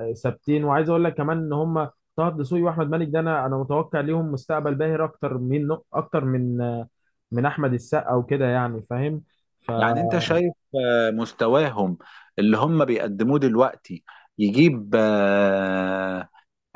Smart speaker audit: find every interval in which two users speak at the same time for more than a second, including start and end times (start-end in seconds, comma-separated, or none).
none